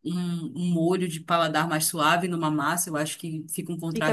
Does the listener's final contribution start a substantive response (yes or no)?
yes